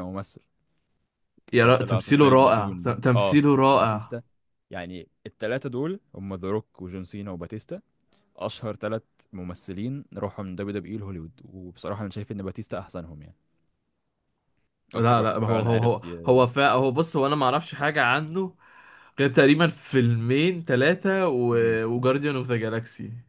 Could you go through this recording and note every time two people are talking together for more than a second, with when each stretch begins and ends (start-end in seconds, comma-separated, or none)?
1.5-4.1, 14.9-16.2